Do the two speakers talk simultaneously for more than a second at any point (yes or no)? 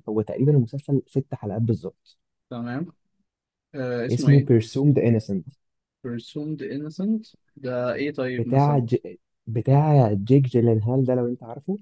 no